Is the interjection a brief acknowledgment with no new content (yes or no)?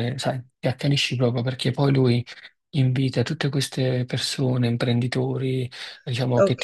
yes